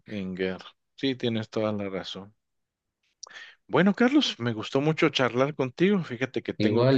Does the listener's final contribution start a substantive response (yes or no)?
no